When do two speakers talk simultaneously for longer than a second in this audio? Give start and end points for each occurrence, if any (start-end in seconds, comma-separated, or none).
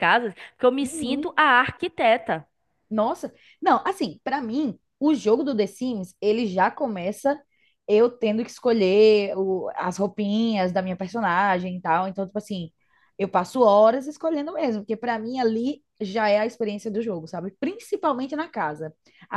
none